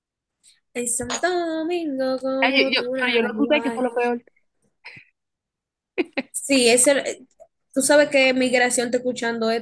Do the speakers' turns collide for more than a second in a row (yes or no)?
yes